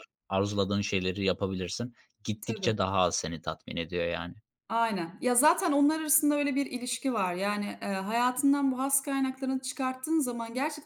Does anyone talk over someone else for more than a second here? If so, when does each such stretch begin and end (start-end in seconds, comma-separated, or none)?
none